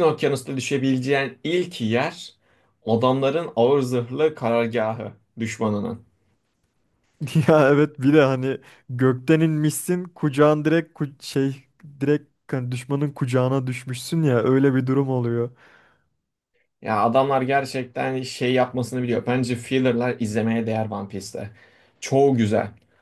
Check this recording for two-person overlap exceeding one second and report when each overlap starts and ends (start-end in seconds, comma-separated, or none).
none